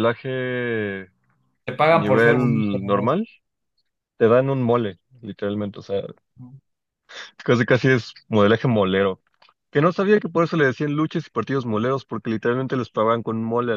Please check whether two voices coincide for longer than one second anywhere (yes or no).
yes